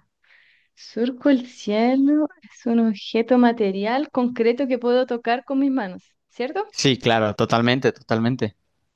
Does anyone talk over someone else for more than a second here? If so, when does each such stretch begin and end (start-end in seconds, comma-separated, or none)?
none